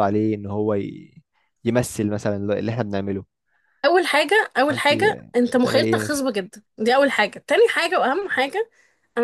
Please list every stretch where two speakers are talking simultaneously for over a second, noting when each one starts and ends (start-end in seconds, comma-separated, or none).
4.7-6.2